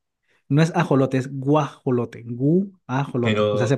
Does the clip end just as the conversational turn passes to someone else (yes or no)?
yes